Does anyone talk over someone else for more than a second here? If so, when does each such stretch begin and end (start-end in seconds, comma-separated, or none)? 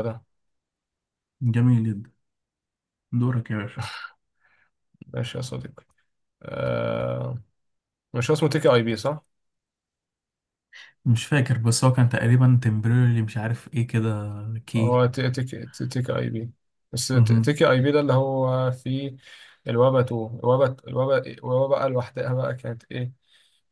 none